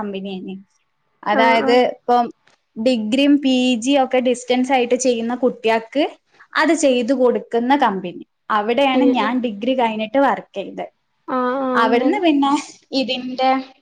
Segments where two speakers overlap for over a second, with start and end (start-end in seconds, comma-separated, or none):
none